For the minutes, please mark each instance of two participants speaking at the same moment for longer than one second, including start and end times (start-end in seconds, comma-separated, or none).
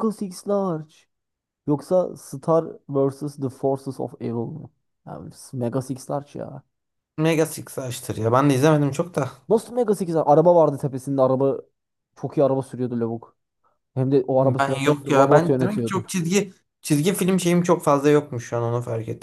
14.4-16.0